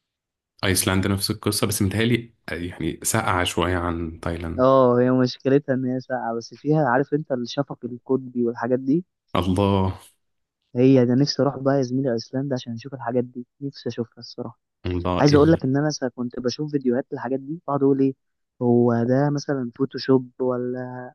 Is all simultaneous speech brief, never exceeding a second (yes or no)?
yes